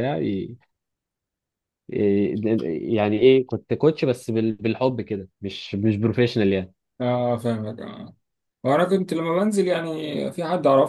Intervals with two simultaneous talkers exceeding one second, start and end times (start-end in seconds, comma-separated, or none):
none